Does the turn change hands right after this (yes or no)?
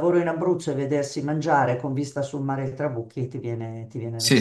yes